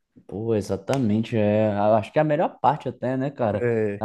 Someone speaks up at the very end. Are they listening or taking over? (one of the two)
listening